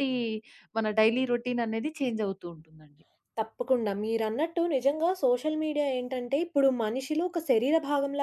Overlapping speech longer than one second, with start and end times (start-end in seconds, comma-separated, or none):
none